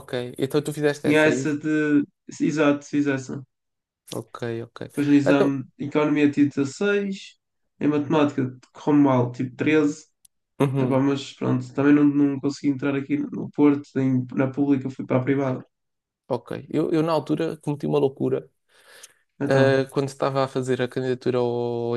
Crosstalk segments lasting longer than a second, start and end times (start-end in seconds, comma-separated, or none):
none